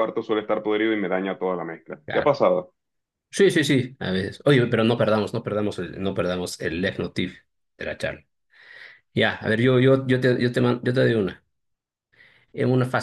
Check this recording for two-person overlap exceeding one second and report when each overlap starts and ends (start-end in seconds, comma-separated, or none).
none